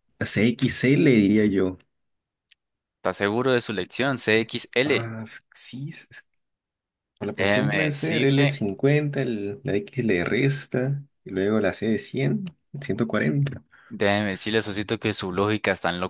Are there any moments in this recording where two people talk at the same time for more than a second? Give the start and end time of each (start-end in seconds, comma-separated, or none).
7.4-8.7